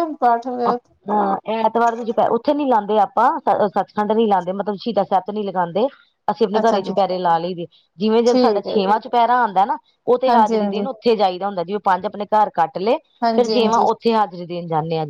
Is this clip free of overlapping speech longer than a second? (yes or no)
yes